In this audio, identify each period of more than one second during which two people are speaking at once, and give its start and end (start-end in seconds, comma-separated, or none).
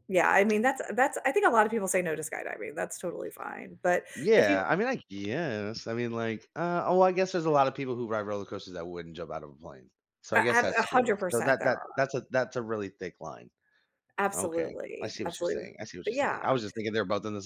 10.3-12.1, 14.4-16.6